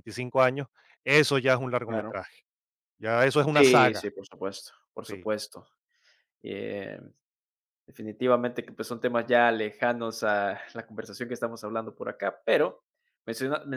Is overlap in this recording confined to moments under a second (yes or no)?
yes